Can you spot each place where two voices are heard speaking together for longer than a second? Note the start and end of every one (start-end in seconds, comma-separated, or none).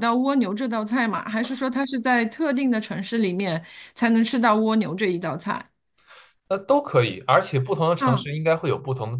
none